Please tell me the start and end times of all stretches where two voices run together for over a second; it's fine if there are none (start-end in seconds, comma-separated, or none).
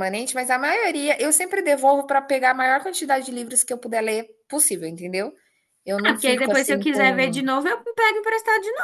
6.0-7.4